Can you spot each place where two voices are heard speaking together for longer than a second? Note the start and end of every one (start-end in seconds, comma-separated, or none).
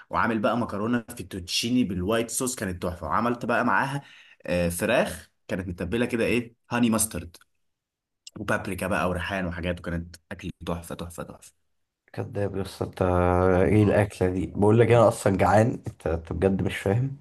none